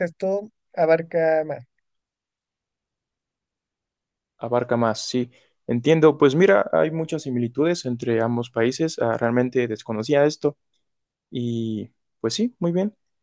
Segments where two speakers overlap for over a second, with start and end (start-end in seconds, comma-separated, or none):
none